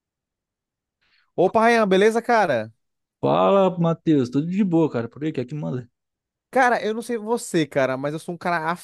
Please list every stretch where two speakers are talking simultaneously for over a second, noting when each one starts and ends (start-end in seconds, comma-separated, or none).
none